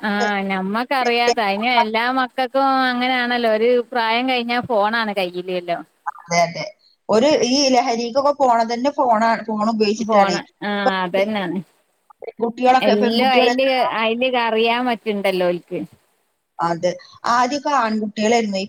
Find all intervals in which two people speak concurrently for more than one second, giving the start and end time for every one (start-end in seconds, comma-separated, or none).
none